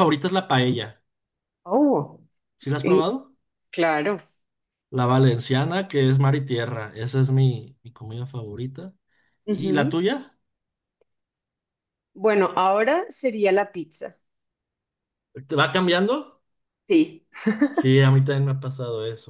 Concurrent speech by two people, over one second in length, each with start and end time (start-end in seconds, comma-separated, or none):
none